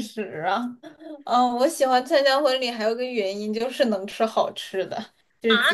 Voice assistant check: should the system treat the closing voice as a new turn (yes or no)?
yes